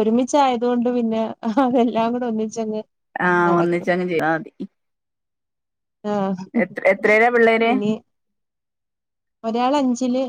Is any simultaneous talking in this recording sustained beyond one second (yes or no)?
no